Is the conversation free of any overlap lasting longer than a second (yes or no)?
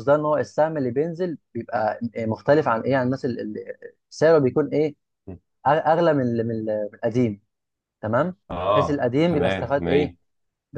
no